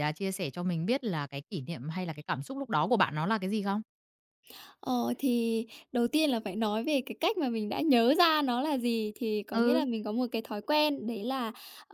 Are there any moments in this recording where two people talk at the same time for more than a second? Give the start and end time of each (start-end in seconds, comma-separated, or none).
none